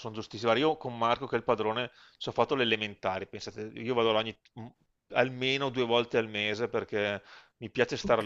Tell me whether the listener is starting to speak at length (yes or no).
no